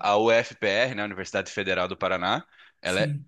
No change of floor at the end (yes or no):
yes